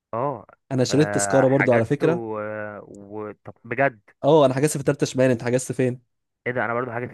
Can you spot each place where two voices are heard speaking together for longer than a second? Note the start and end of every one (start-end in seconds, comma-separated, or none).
0.9-2.2